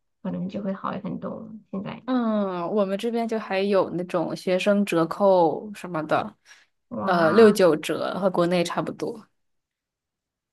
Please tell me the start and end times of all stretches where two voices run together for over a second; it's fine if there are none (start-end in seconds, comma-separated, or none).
none